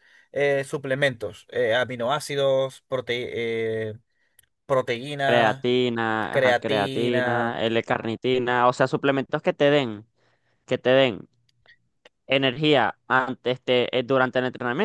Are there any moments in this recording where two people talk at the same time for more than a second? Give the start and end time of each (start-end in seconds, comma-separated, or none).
6.3-7.6